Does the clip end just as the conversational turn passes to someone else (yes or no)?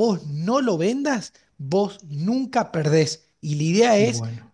no